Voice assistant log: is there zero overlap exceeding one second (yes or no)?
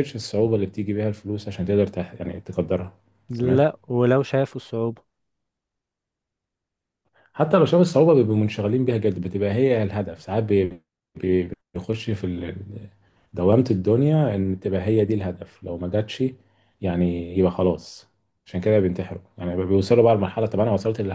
yes